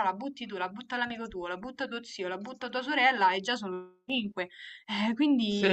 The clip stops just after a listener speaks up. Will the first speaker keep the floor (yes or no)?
no